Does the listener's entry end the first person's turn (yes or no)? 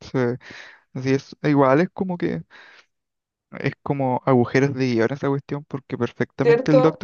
no